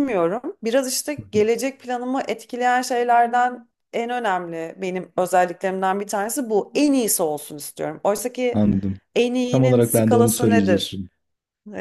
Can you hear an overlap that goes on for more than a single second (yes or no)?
yes